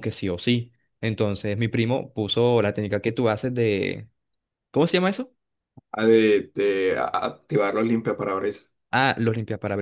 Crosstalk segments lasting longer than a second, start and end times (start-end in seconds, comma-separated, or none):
none